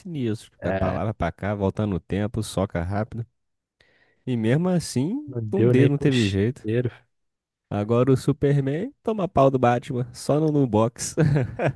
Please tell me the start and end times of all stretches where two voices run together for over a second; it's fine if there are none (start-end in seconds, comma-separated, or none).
5.3-6.7